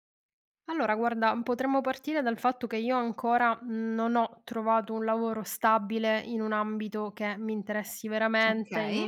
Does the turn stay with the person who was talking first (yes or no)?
yes